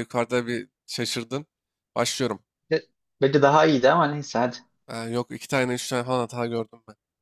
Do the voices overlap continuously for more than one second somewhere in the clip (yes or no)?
no